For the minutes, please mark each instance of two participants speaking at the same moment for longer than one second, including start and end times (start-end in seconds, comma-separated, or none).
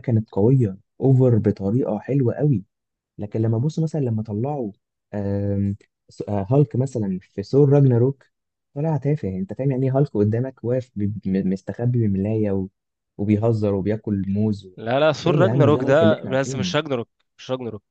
15.2-16.7